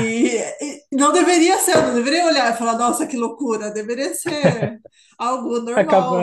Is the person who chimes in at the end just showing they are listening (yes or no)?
no